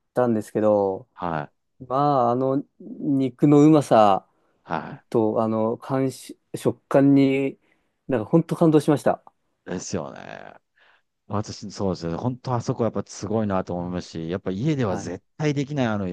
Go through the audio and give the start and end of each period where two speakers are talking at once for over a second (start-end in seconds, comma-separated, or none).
none